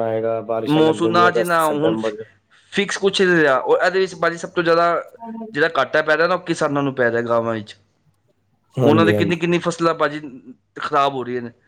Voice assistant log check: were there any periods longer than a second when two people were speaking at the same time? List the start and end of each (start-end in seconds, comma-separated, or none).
0.7-1.9